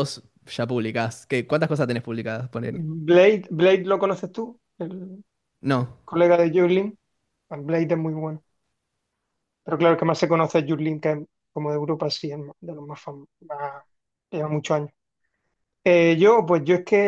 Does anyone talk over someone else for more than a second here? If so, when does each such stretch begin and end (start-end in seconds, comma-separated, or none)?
none